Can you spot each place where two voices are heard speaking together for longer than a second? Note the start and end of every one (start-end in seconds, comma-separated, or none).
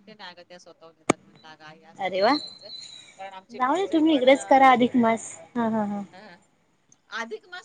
none